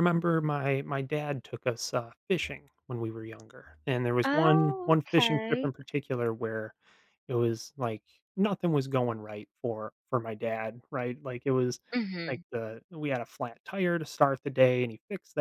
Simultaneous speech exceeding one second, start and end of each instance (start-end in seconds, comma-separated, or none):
4.2-5.7